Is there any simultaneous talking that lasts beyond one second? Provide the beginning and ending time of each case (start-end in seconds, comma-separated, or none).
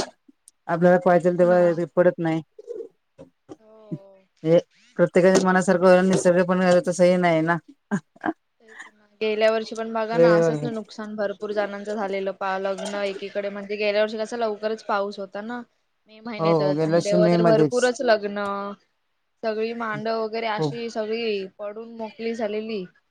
16.4-17.8